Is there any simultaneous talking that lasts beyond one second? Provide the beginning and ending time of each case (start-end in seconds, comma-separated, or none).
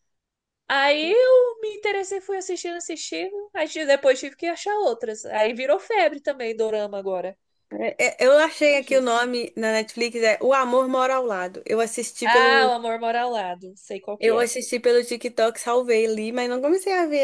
none